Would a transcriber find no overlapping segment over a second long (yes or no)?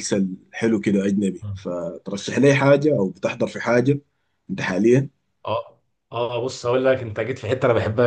yes